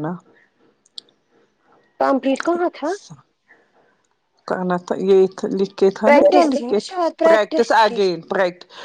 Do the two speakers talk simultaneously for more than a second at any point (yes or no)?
yes